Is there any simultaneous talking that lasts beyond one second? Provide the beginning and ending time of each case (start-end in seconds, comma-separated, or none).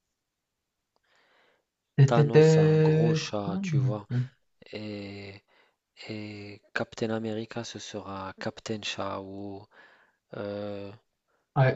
2.1-4.1